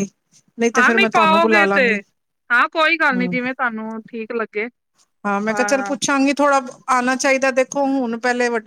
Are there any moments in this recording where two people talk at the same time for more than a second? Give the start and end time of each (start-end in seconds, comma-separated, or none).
0.8-2.0